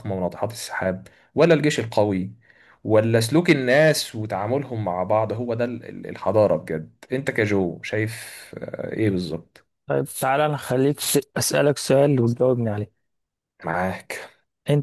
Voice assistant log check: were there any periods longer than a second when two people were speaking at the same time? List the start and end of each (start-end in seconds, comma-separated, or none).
none